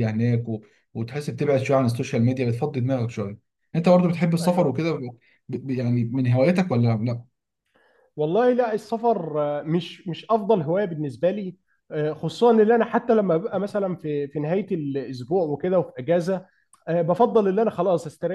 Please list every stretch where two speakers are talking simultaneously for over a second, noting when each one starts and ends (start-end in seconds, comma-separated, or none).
none